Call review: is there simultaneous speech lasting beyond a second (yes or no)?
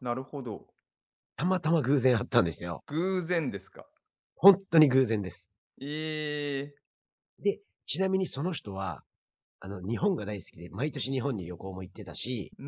no